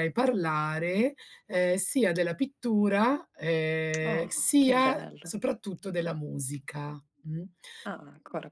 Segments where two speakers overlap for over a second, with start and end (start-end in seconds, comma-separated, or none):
4.0-5.3